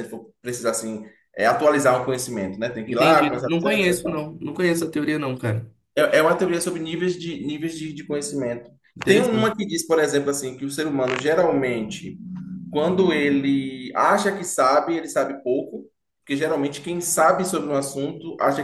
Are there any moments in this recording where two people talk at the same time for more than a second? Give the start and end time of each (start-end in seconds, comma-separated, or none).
2.9-4.3